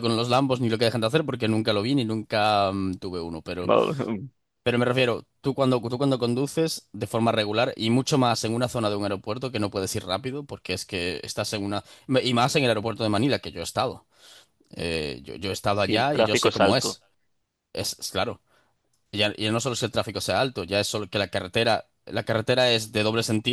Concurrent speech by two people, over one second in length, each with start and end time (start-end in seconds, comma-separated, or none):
15.7-17.0